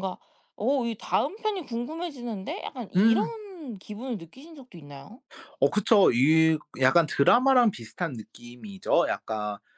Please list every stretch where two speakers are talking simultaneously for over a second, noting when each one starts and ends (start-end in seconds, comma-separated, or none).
none